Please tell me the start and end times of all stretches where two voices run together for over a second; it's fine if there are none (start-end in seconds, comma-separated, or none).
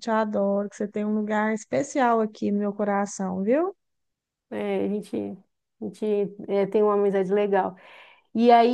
none